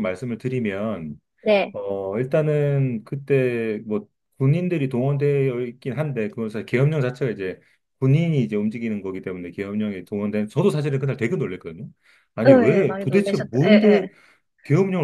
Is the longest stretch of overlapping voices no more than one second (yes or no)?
no